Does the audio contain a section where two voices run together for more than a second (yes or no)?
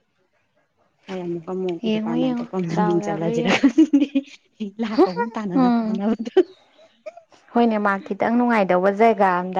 yes